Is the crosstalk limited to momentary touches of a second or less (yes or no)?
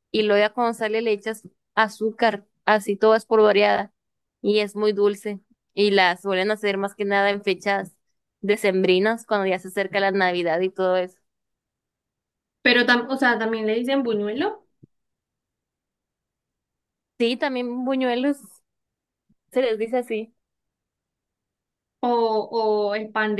yes